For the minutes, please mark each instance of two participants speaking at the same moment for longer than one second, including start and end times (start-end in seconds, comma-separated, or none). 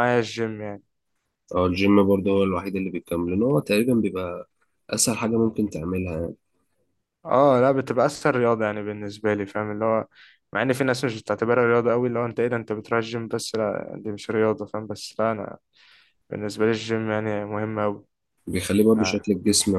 none